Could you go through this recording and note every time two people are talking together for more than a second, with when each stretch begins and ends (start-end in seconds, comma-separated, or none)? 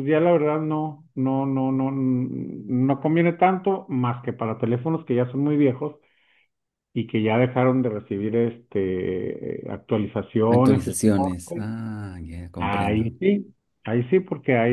10.5-11.7